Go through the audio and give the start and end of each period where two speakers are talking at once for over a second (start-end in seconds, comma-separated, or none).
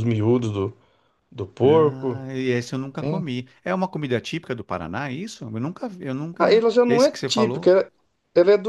6.4-7.7